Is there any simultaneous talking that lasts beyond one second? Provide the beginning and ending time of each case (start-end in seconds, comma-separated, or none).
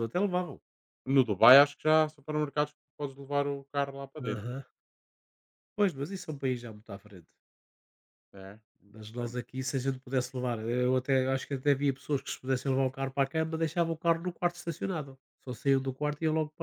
none